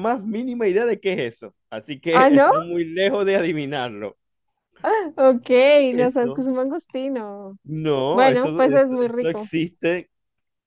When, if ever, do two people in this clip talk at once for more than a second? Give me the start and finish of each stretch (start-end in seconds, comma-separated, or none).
8.1-9.5